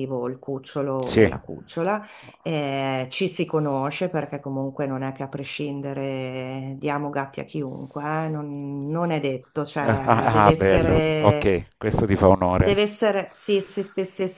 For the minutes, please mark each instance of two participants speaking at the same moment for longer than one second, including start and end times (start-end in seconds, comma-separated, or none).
9.9-11.5